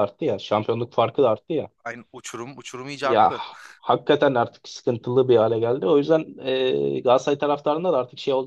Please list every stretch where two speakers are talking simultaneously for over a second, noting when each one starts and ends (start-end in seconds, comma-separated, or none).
none